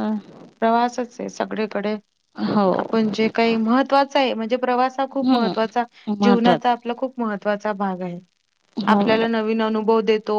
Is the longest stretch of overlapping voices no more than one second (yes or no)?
yes